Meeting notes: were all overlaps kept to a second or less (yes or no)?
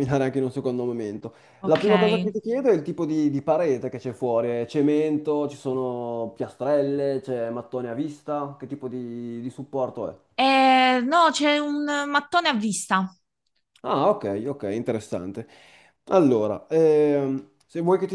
yes